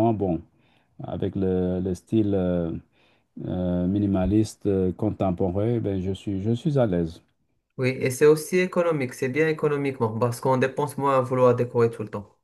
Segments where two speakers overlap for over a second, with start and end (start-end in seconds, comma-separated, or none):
none